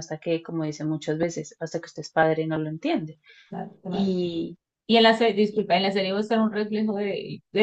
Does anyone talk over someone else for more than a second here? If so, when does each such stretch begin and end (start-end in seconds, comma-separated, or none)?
none